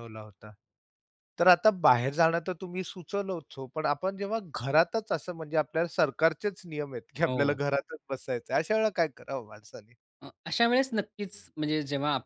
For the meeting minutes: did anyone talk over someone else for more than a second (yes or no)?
no